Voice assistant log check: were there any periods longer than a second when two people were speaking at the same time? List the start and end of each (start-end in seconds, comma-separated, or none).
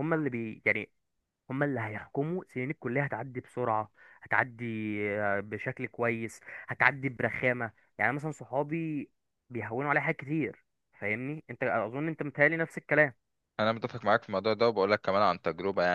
none